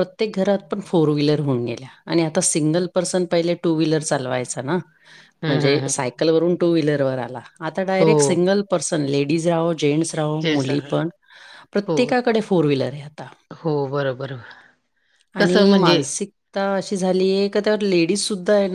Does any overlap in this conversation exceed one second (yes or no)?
no